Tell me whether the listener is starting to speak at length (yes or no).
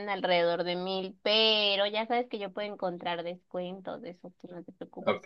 yes